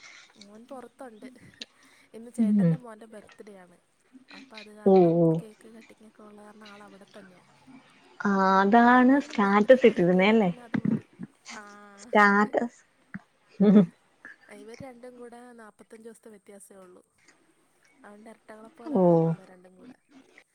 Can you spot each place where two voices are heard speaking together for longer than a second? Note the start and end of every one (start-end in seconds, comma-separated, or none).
9.0-10.5